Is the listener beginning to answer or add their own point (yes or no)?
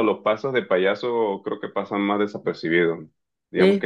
no